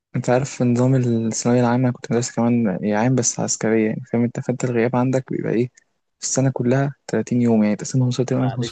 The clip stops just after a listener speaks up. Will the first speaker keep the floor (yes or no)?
no